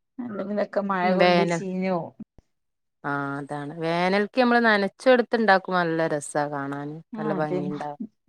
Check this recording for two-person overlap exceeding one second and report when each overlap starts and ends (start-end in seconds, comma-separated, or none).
none